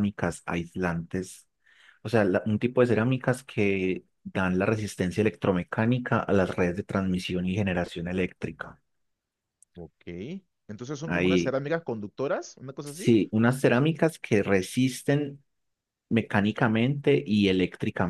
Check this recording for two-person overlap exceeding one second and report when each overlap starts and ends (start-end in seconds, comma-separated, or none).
none